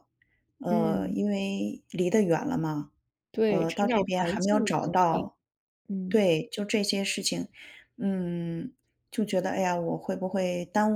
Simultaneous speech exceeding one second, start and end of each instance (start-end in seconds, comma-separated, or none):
3.5-5.2